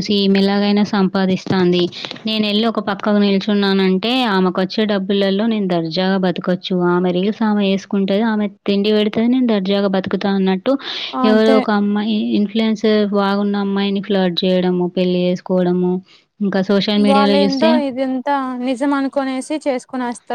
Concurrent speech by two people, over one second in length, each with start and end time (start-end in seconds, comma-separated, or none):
none